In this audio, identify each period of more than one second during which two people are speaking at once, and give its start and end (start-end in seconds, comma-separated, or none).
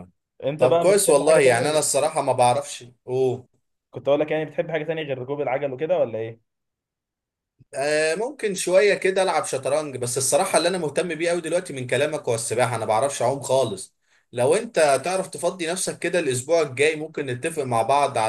0.6-1.9